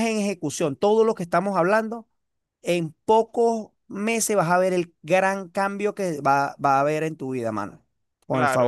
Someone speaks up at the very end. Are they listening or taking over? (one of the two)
taking over